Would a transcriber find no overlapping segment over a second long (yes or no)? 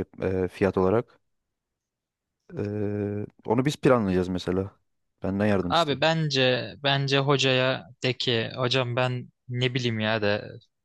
yes